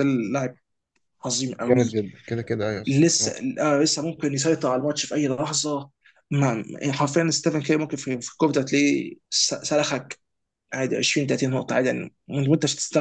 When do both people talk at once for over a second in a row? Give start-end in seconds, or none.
none